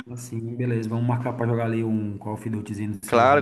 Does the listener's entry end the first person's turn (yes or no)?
yes